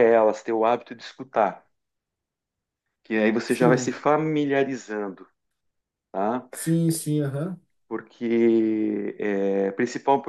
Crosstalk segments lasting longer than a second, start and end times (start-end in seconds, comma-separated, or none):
none